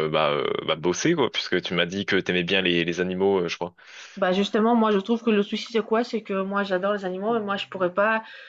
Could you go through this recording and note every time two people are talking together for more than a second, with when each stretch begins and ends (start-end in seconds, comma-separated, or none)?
none